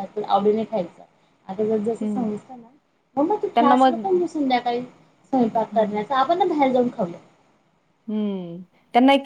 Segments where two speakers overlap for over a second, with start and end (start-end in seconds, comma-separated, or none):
none